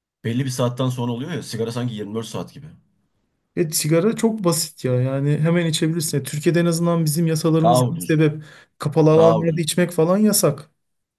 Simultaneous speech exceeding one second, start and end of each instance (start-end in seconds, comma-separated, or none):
none